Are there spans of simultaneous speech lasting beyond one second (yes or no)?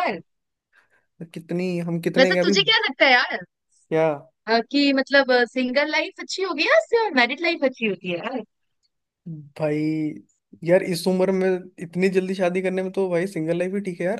no